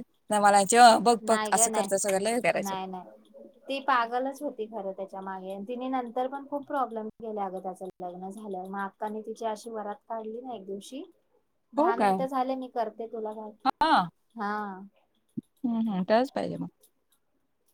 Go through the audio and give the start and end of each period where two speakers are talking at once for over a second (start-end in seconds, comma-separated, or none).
none